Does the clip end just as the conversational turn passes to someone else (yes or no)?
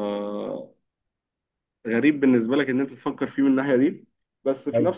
no